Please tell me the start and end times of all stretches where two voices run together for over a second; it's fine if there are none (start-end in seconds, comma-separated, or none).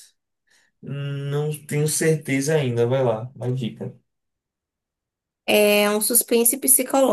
none